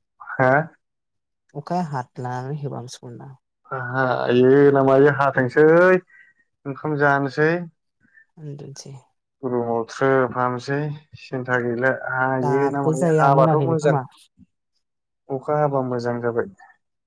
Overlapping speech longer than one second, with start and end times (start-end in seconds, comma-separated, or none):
12.4-14.0